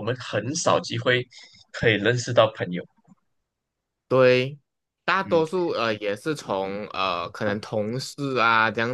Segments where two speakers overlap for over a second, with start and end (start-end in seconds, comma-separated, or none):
none